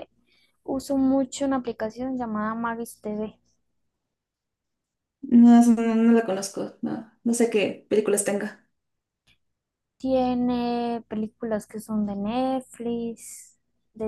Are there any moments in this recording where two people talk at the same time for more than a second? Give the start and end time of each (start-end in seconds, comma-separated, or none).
none